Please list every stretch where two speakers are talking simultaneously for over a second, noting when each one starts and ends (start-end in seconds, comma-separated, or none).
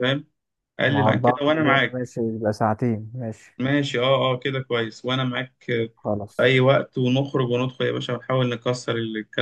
0.9-2.1